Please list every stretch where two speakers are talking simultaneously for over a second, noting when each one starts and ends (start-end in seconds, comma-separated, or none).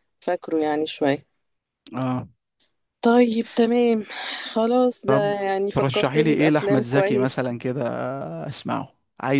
5.7-7.3